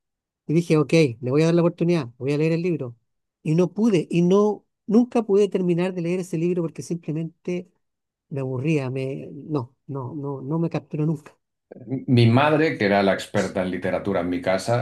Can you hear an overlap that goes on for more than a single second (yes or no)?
no